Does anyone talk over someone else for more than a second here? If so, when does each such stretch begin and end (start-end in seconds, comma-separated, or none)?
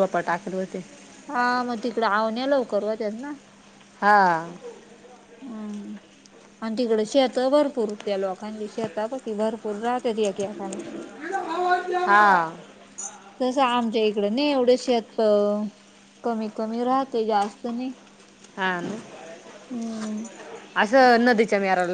none